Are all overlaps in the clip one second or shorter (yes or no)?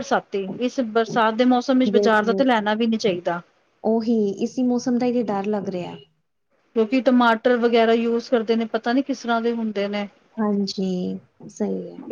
yes